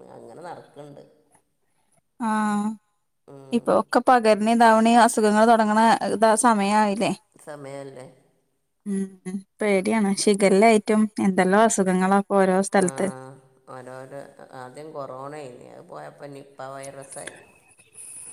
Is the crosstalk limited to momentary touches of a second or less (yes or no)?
yes